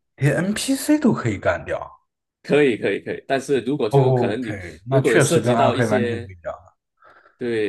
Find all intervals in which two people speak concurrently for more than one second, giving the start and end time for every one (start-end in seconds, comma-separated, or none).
3.9-6.3